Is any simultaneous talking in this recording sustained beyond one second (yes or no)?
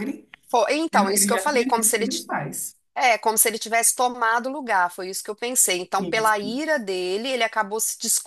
yes